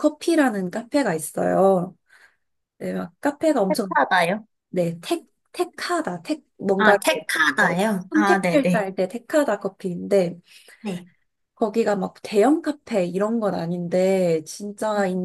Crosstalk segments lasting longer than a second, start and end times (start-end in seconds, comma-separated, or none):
6.8-8.8